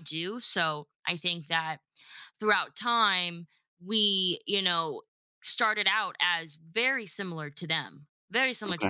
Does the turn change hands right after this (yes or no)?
no